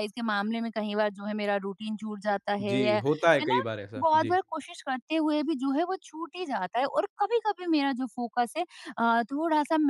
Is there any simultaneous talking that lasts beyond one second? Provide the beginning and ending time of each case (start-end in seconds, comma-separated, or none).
2.6-4.4